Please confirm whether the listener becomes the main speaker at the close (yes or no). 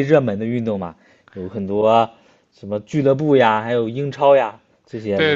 yes